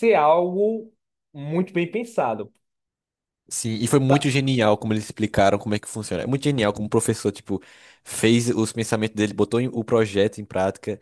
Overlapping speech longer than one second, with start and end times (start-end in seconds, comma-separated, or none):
none